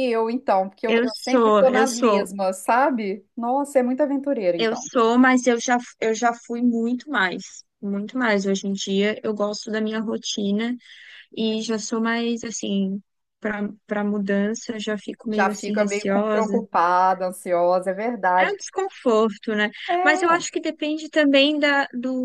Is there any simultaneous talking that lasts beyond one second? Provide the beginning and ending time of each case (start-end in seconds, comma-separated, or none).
0.9-2.3, 15.3-16.6